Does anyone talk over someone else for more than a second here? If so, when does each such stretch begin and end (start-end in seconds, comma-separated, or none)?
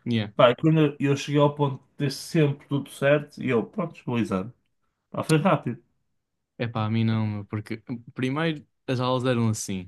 none